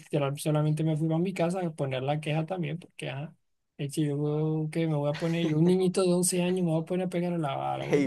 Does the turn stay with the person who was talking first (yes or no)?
no